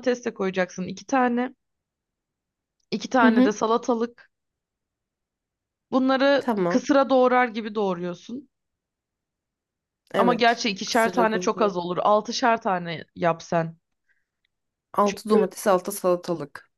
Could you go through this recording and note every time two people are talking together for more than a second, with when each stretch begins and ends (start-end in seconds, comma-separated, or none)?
10.2-11.8